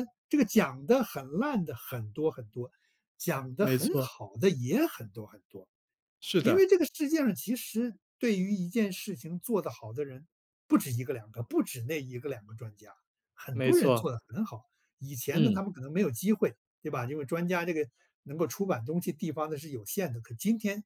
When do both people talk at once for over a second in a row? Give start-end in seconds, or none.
none